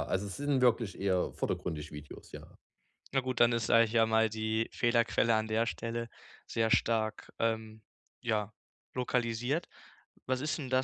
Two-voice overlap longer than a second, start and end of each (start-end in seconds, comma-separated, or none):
none